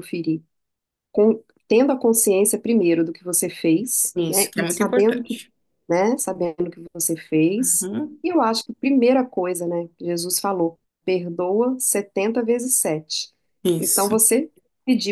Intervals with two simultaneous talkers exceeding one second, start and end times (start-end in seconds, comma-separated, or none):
4.2-5.4